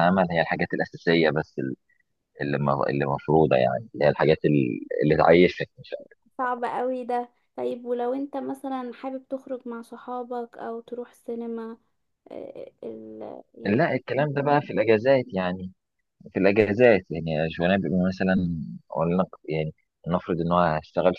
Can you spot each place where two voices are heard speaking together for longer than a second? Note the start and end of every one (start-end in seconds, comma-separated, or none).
none